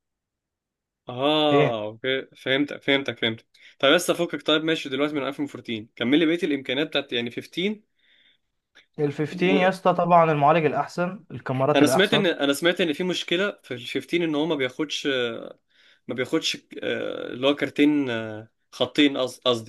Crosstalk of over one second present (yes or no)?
no